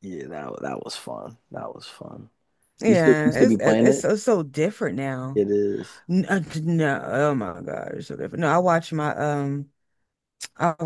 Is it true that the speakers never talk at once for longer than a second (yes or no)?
no